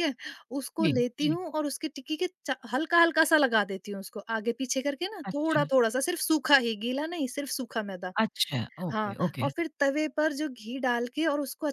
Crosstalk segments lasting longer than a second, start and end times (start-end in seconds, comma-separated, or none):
none